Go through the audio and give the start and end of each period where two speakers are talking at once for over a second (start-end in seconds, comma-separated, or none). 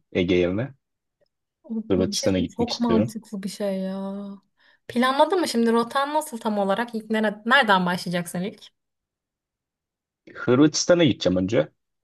1.9-3.1